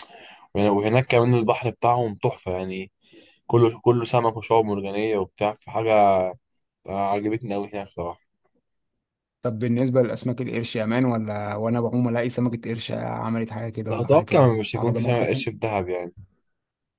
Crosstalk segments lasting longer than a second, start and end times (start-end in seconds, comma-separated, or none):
13.9-15.5